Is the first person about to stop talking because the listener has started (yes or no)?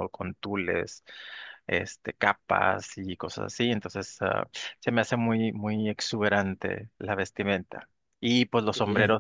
no